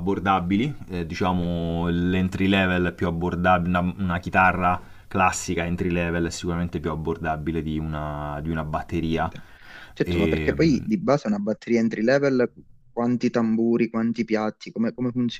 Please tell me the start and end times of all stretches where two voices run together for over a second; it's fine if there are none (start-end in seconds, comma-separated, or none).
none